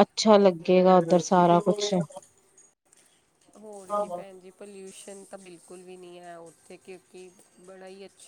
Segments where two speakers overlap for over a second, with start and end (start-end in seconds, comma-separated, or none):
none